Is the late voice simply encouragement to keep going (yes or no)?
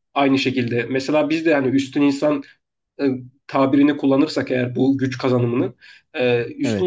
yes